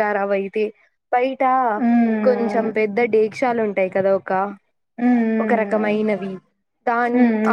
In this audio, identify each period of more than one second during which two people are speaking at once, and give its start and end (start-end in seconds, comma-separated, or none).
none